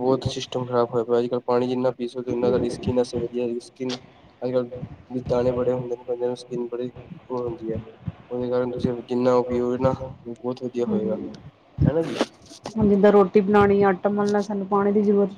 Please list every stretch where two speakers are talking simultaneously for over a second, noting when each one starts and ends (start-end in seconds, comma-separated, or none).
none